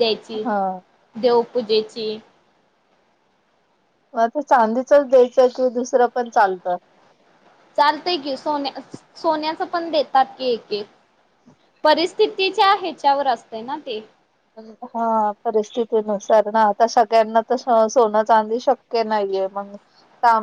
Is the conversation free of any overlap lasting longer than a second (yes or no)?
yes